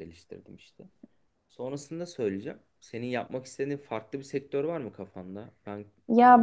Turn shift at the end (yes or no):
yes